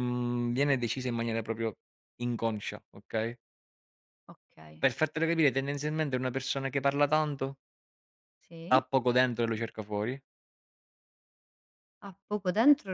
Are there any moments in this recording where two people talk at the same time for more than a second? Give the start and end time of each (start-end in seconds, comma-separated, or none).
none